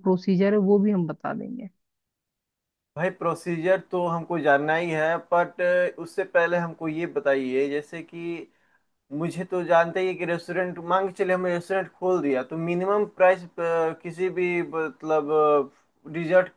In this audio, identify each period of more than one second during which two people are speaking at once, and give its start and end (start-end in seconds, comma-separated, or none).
none